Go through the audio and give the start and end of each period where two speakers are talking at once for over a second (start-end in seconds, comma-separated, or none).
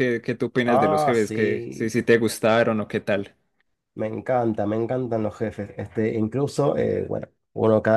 0.6-1.9